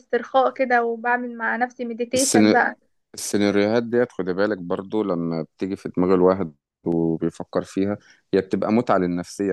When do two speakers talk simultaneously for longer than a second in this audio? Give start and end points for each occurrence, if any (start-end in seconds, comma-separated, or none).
none